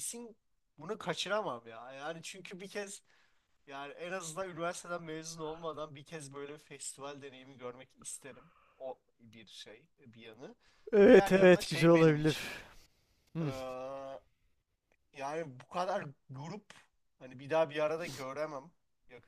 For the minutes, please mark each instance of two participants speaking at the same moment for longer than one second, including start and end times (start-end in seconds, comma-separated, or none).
11.1-12.4